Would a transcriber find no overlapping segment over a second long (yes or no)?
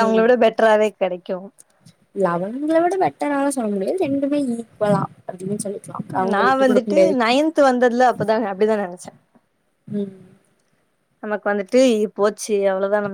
yes